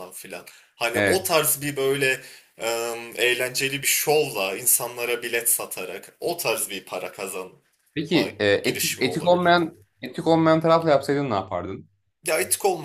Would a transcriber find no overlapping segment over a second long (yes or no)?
no